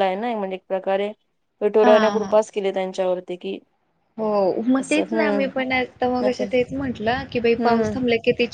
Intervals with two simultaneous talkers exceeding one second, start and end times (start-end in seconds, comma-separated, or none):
none